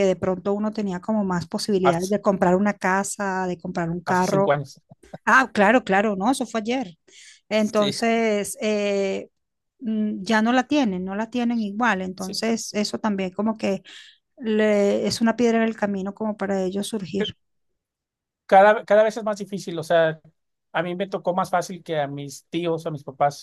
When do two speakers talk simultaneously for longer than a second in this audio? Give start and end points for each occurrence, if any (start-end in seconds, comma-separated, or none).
none